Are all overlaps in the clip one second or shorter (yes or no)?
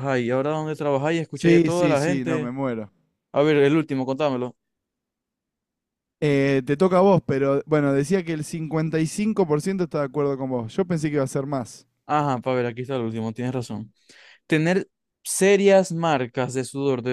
no